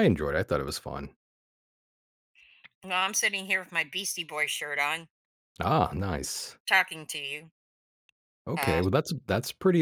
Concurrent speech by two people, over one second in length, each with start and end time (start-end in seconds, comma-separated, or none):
none